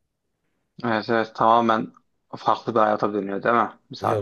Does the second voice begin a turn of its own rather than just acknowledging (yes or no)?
yes